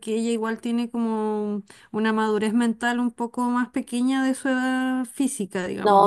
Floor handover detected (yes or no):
yes